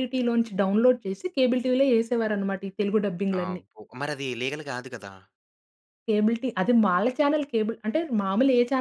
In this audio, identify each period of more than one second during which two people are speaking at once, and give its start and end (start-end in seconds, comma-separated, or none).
none